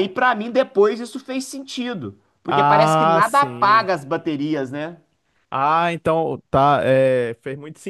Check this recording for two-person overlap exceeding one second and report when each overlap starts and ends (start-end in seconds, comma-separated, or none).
2.5-3.9